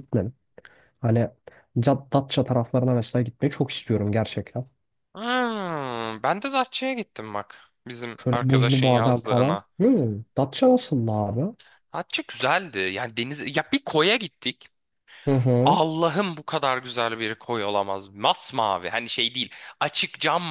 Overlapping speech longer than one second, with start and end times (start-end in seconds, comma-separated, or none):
8.2-9.7